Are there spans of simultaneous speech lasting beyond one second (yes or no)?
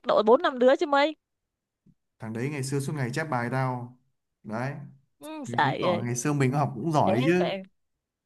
no